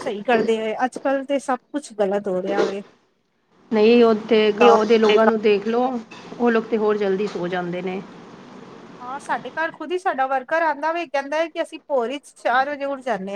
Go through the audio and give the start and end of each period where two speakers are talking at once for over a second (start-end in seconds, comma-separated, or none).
none